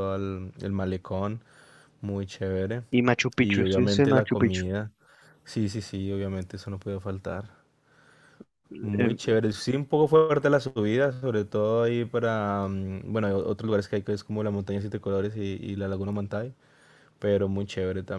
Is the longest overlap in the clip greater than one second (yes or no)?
yes